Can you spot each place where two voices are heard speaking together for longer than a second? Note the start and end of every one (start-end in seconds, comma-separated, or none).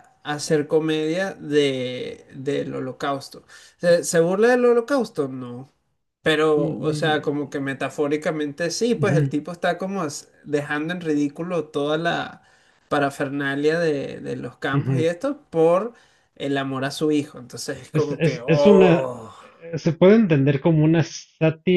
17.9-19.3